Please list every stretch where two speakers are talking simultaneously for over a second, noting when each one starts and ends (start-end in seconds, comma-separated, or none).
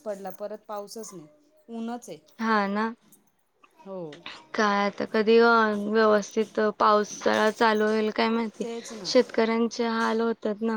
none